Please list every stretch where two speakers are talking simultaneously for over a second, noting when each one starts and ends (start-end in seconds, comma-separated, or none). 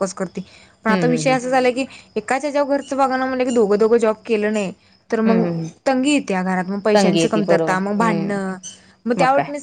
6.9-8.4